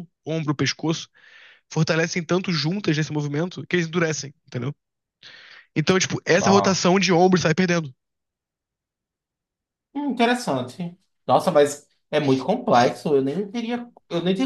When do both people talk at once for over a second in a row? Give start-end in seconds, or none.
none